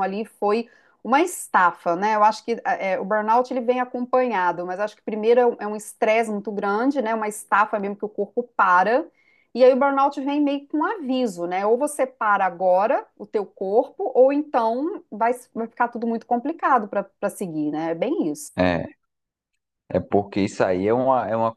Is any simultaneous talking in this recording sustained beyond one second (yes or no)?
no